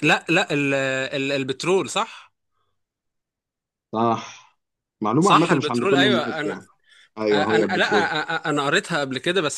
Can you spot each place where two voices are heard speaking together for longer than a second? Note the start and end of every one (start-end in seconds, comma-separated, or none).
5.2-6.6